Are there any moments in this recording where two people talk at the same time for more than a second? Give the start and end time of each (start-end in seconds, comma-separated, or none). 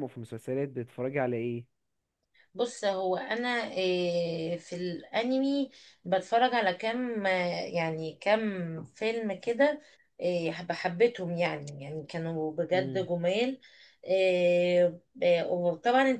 none